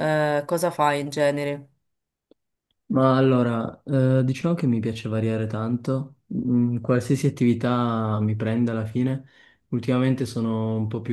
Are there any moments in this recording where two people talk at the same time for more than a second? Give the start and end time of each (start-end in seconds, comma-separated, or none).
none